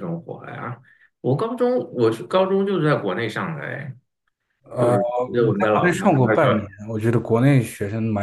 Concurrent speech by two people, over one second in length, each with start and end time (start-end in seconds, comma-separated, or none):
4.8-6.5